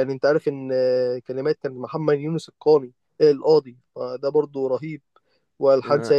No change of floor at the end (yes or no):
yes